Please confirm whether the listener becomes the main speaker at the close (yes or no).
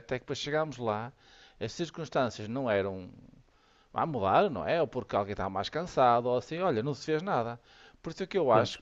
no